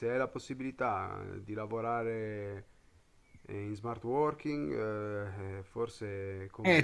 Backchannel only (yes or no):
no